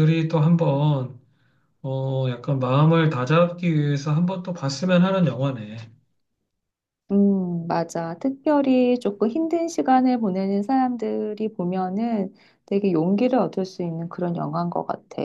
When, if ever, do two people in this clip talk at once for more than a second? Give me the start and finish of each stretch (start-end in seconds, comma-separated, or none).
none